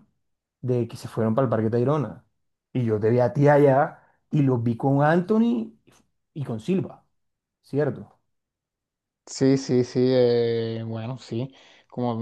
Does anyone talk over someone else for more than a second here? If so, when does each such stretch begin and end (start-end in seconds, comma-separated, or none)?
none